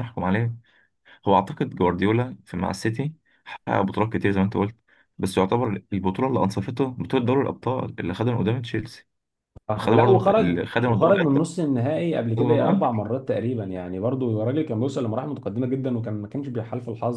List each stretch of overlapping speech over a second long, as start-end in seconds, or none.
9.8-11.1